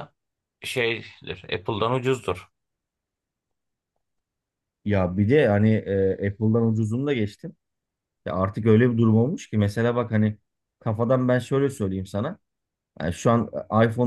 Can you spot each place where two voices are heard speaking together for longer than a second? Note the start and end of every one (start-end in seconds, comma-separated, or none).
none